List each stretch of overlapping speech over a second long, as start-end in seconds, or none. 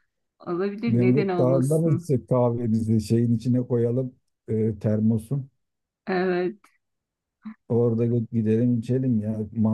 0.9-2.1